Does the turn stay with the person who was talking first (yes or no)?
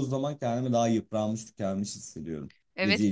no